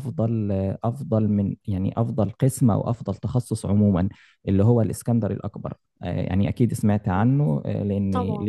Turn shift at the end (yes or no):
no